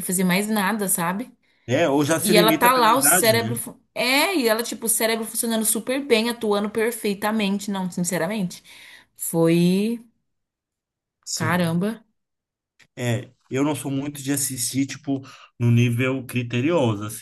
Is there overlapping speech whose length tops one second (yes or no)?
yes